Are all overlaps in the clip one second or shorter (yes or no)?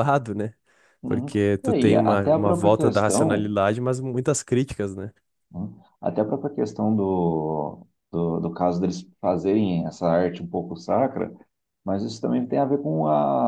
no